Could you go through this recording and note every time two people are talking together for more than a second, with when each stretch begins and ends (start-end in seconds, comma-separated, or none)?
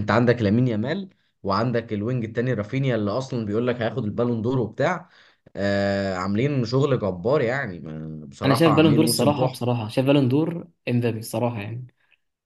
8.4-9.7